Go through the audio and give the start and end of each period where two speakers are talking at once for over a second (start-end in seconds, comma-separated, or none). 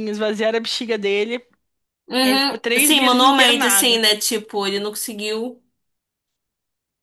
2.2-4.0